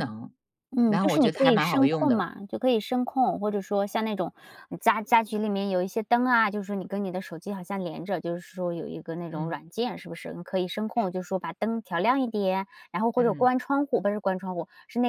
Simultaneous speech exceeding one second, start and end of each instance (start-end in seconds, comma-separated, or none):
0.8-2.3